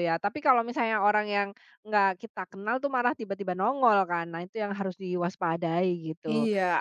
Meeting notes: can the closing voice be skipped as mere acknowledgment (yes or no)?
no